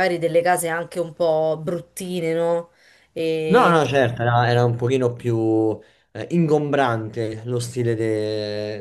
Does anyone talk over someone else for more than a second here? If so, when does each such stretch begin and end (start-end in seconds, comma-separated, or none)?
none